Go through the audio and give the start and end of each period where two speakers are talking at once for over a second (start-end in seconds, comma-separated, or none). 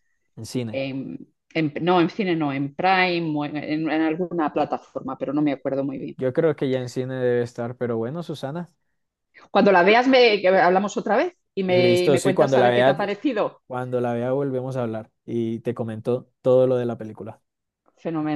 11.6-13.0